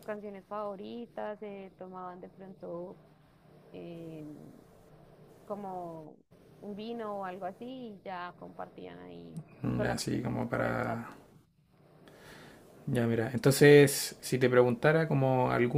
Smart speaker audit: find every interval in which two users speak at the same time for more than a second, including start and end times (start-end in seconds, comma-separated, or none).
9.8-11.1